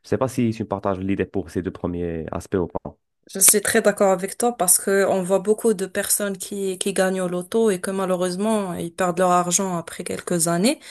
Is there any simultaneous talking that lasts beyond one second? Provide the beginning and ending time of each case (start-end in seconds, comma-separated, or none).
none